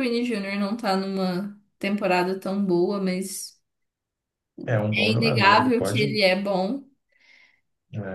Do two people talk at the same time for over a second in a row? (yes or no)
yes